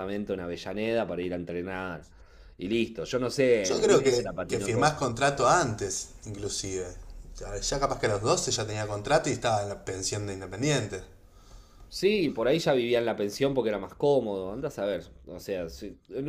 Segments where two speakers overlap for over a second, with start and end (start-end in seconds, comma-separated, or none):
3.6-5.0